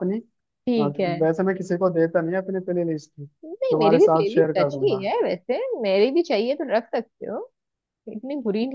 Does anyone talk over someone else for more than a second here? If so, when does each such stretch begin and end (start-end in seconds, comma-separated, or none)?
3.5-5.1